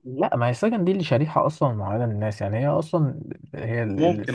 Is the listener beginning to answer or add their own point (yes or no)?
no